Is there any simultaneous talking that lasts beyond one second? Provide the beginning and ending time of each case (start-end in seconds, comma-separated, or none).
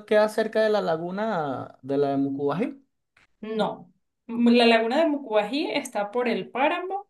none